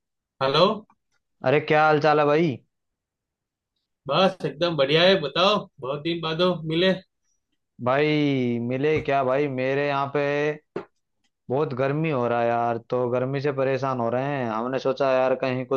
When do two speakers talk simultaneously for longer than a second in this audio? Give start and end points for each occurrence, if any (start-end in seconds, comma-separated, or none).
none